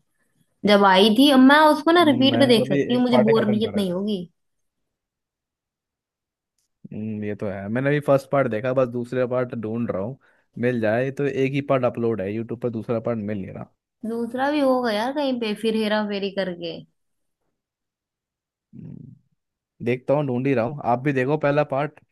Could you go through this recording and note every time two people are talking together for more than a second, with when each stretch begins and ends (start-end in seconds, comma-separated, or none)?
2.0-4.0